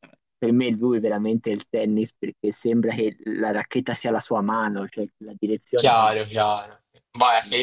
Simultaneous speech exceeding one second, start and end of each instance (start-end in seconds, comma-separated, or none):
none